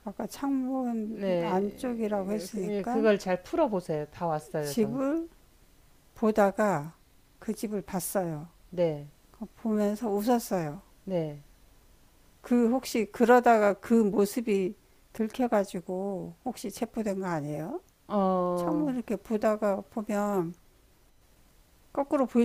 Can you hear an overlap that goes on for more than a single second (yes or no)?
yes